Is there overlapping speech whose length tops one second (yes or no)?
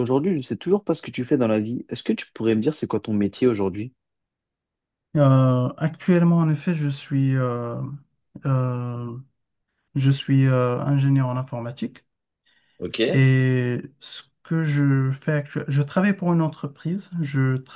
no